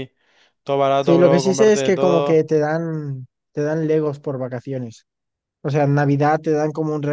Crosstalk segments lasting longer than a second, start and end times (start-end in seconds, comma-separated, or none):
1.1-2.5